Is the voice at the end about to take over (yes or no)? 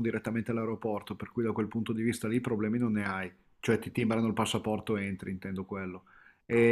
no